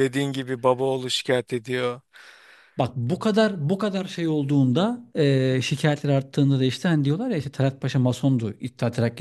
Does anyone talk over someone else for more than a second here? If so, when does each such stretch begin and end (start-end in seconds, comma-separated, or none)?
none